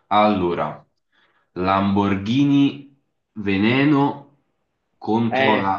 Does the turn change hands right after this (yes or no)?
no